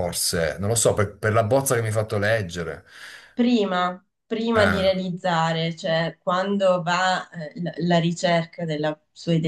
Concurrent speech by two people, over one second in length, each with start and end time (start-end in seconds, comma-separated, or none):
none